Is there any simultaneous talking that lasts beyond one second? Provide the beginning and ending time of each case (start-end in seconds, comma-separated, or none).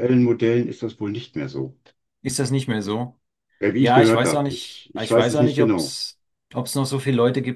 3.8-6.0